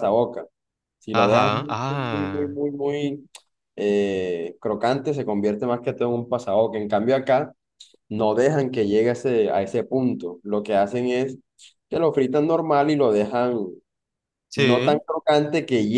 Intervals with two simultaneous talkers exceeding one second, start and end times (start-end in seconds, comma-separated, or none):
1.1-2.5